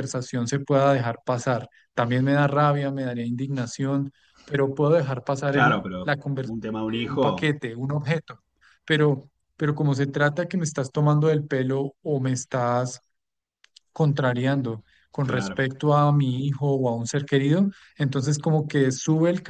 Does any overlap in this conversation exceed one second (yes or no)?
yes